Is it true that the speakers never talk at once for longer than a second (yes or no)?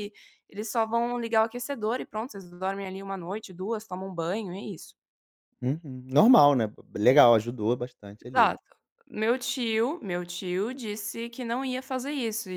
yes